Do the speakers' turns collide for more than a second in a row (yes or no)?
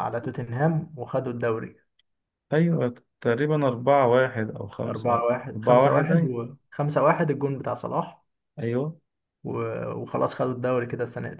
yes